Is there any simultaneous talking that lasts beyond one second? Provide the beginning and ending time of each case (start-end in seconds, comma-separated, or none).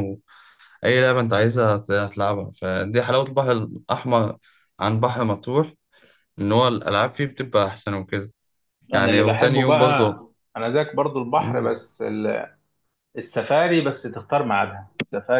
8.9-10.2